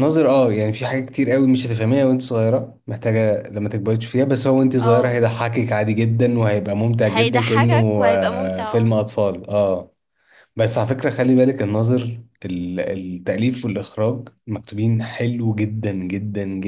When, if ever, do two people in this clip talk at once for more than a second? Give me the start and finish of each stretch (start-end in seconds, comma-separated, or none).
7.0-8.9